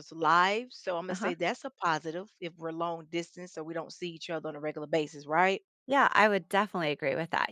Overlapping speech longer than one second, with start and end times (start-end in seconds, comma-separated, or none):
none